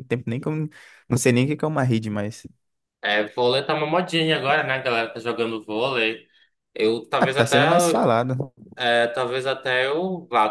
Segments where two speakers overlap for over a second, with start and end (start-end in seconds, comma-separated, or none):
none